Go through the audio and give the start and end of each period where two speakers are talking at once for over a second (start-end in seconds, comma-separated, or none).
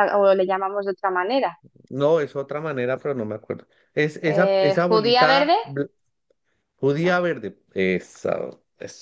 4.3-5.5